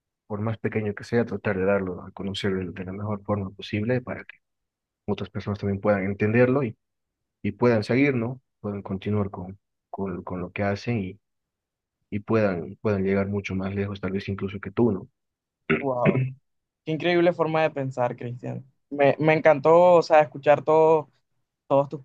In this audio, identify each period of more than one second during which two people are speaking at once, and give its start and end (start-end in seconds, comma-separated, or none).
none